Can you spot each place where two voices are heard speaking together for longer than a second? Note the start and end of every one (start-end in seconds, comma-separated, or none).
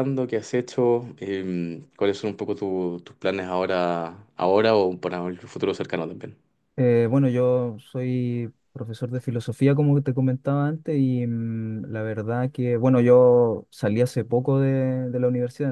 none